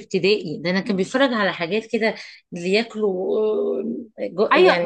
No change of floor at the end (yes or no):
no